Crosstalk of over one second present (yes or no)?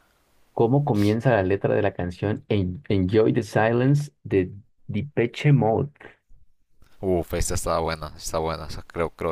no